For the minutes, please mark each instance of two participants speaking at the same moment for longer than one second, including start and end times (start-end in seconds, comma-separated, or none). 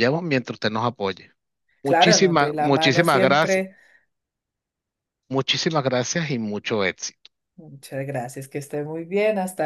1.8-3.6